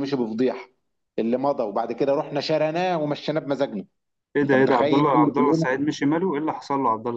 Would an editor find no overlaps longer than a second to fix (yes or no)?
no